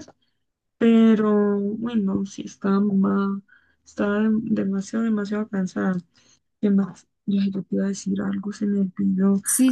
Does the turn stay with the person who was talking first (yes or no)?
no